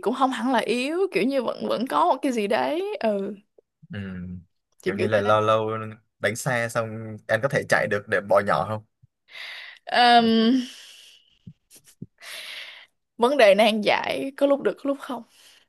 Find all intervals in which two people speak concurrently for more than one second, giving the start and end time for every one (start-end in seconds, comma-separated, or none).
none